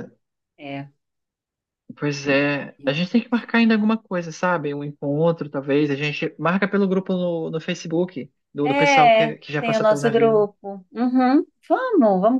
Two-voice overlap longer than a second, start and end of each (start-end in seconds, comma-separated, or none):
8.6-10.5